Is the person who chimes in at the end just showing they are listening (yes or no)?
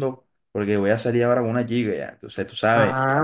no